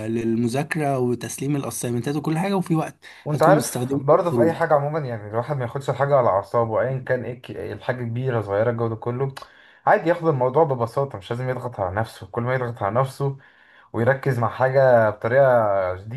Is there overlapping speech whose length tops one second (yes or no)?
yes